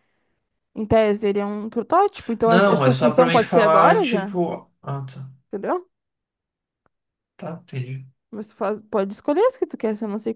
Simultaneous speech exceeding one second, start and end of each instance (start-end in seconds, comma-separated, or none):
2.4-4.3